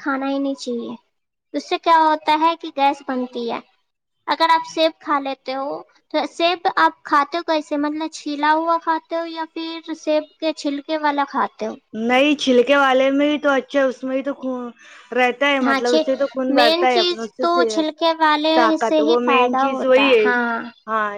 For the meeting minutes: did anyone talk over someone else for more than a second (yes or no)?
yes